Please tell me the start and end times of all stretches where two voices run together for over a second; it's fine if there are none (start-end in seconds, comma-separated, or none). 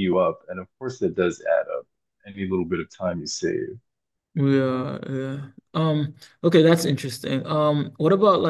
none